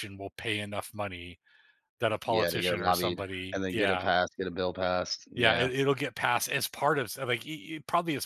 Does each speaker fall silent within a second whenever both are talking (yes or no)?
no